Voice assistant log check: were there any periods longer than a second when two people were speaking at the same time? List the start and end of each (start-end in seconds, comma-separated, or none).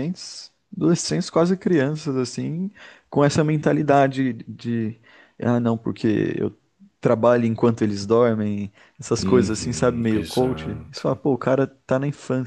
9.2-11.0